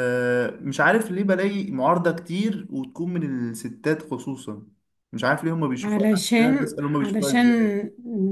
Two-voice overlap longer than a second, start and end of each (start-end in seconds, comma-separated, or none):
5.8-7.5